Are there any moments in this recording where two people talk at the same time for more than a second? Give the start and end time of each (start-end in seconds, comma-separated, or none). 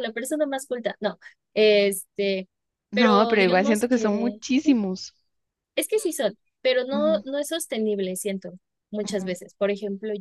2.9-4.4